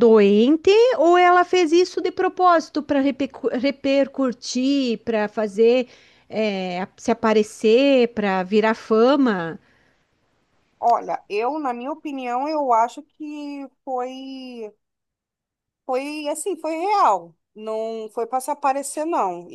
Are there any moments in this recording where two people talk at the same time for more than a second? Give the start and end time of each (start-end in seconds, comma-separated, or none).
none